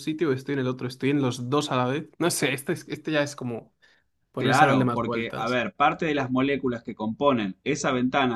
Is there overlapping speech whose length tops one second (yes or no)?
yes